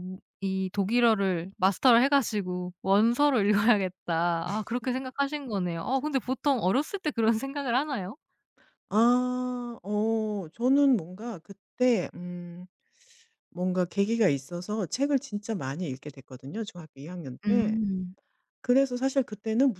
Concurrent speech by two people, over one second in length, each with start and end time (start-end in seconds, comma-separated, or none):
none